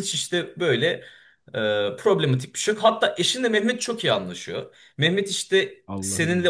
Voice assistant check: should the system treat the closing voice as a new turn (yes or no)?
no